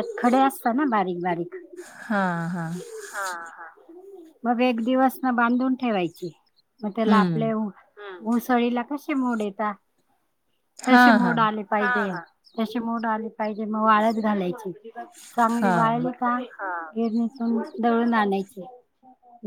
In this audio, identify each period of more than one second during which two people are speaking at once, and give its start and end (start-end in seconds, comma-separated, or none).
none